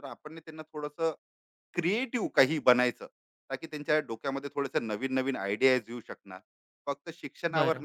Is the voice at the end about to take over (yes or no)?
no